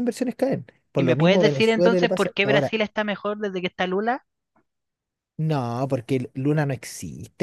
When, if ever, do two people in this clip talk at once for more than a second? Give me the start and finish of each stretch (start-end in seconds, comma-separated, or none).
1.0-2.7